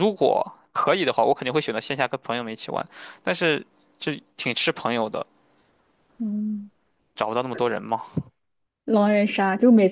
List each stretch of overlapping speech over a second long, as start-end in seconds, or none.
none